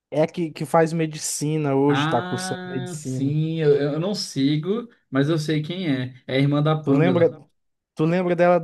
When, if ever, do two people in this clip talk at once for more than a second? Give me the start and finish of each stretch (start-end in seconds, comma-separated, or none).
1.9-3.4